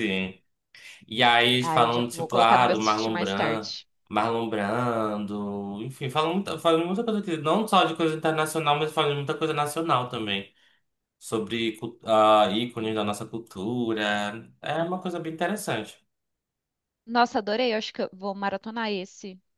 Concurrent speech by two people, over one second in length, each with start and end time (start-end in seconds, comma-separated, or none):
1.6-3.7